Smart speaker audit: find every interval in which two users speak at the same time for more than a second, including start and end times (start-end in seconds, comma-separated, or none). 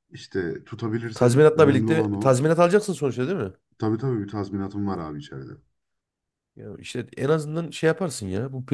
1.1-2.4